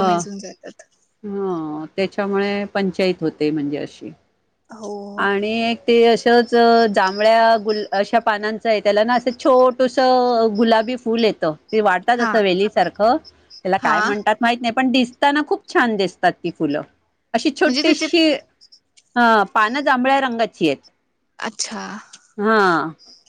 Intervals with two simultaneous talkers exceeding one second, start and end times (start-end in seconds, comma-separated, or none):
none